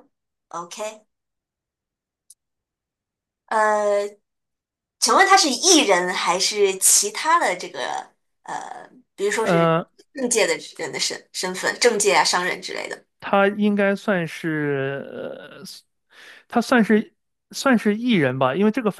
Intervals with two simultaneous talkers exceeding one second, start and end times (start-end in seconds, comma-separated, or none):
none